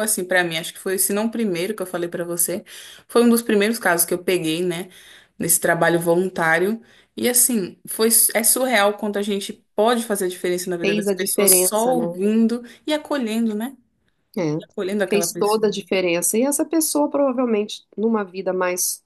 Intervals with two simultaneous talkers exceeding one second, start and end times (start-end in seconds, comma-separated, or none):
10.8-12.0